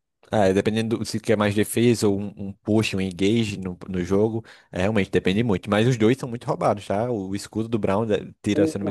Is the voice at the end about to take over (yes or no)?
yes